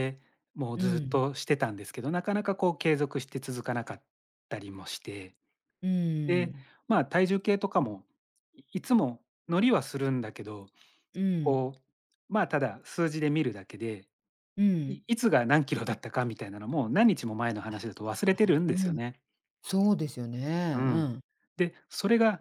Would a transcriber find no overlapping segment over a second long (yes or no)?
yes